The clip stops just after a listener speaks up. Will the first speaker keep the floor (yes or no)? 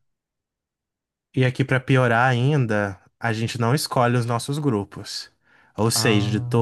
yes